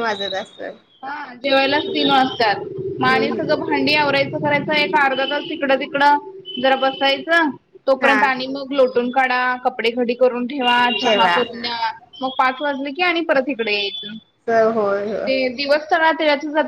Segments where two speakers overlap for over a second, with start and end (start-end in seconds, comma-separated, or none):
none